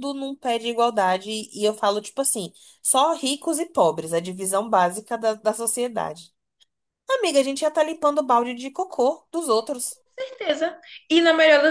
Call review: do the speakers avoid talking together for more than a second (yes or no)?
yes